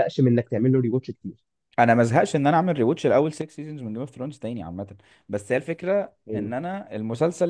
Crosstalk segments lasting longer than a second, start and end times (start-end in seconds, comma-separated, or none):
none